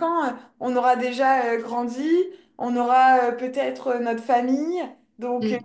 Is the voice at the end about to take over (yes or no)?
no